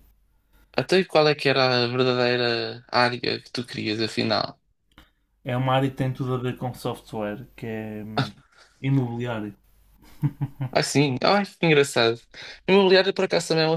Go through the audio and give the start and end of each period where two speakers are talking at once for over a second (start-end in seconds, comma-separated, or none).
none